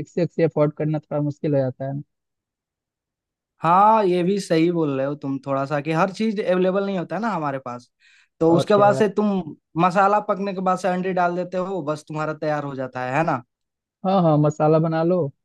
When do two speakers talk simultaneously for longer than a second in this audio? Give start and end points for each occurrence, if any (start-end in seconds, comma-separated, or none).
none